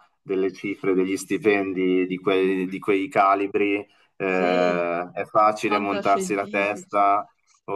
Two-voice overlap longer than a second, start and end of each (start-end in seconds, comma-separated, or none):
5.6-7.0